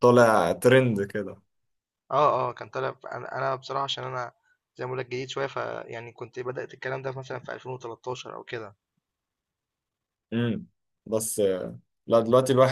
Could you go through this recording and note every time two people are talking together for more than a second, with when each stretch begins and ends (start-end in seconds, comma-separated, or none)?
none